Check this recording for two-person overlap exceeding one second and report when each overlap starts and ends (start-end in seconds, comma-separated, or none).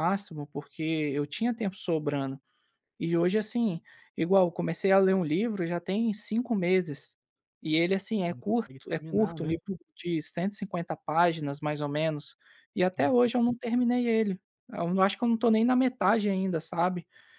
8.3-9.5